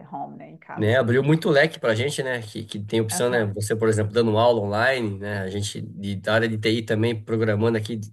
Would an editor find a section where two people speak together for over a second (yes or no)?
no